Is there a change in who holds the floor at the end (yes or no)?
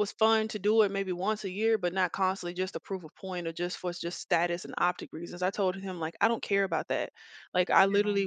no